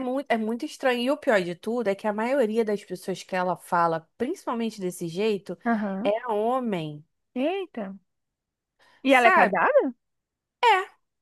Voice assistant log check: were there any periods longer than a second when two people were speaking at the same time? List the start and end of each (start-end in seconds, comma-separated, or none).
none